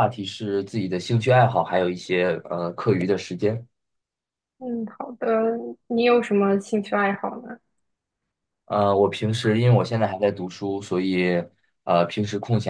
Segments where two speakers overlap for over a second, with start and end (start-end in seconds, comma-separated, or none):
none